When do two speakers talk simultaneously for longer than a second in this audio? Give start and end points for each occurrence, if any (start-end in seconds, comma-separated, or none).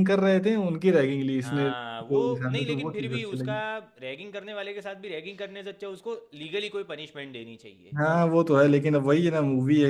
1.4-3.5